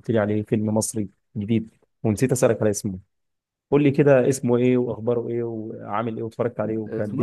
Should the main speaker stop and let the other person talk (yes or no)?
yes